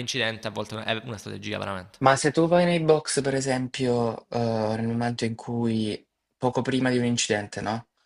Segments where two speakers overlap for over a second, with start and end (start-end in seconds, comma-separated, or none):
none